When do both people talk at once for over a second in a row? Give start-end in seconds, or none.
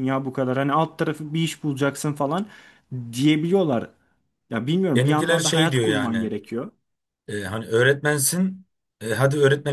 5.0-6.3